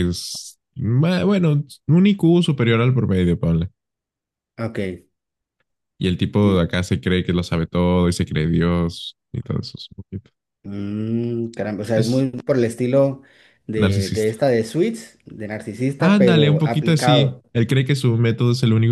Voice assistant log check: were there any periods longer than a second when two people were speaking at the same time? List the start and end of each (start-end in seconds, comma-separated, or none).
16.0-17.4